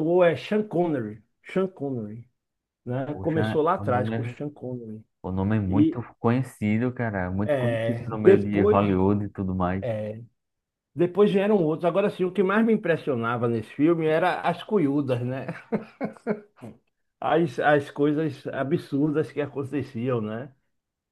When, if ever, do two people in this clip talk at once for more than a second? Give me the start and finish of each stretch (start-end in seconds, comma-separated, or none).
3.1-4.3, 7.4-8.8